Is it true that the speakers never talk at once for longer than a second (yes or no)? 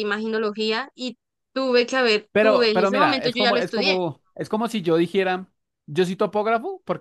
no